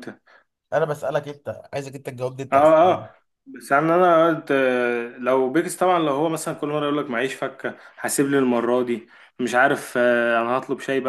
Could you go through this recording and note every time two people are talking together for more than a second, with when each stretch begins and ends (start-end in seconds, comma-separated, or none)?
none